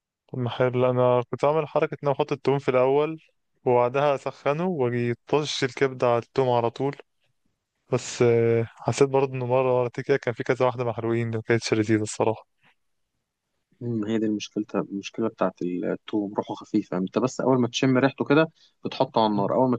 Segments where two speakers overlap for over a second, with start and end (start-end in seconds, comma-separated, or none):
none